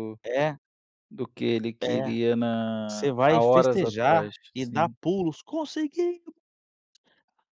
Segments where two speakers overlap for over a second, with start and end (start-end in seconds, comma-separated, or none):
2.9-5.0